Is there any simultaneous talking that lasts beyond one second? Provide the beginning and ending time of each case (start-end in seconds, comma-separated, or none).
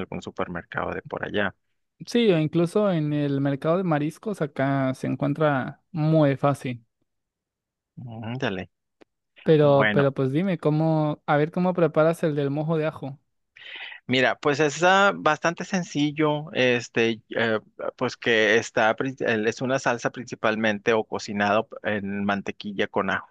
none